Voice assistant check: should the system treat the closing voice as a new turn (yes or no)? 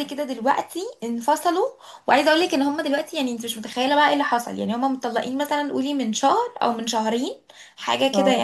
no